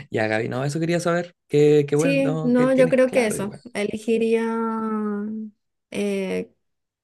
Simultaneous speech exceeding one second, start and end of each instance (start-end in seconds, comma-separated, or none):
1.9-3.6